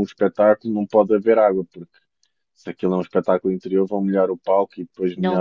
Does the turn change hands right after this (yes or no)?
yes